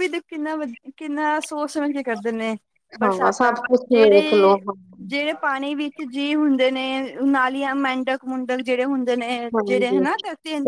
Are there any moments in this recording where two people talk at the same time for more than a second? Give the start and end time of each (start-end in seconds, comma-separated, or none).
3.0-4.6